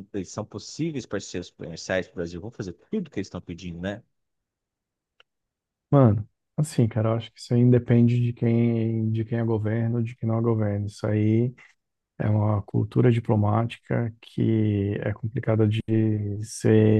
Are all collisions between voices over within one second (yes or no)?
yes